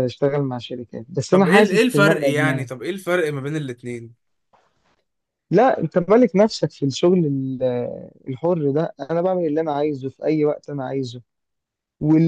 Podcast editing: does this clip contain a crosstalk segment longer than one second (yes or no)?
yes